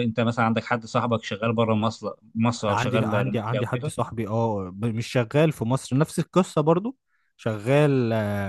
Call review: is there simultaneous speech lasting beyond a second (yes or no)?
yes